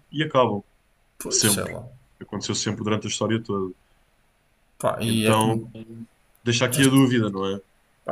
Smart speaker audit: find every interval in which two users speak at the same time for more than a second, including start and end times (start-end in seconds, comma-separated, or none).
none